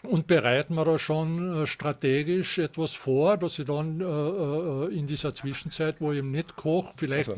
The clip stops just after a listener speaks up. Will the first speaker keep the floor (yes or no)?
yes